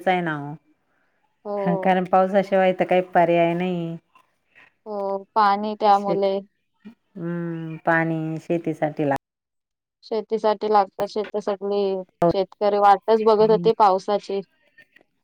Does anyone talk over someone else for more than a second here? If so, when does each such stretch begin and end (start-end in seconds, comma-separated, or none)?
none